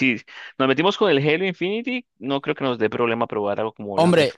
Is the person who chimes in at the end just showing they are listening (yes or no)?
no